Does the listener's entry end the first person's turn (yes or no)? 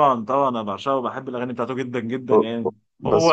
no